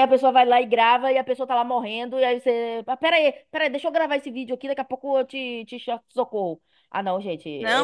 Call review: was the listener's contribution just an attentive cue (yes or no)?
no